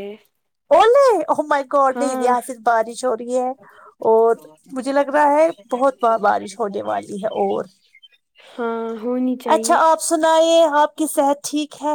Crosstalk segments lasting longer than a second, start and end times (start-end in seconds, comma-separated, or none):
none